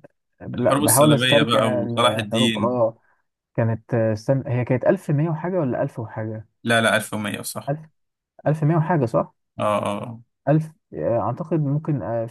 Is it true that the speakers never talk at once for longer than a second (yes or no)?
no